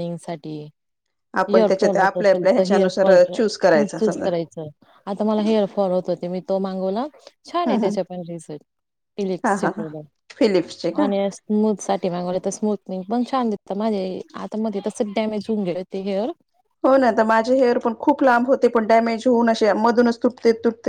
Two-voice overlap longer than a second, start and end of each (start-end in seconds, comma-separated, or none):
1.5-3.4